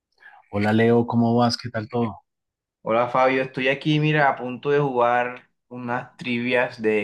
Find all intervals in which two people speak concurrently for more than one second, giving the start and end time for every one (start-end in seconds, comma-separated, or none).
none